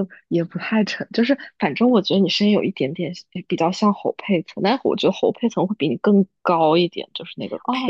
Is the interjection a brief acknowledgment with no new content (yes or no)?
no